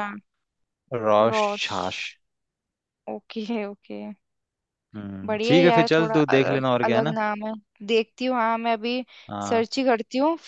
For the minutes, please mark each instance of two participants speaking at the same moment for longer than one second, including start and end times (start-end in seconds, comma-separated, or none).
5.2-7.1